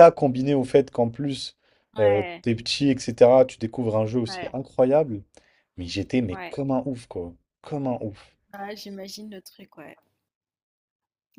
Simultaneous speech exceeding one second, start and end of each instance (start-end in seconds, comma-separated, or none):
none